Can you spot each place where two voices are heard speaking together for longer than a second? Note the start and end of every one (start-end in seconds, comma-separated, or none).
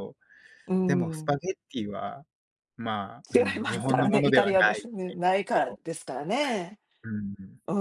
3.3-4.9